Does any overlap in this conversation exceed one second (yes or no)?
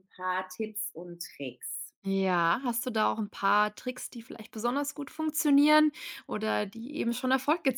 no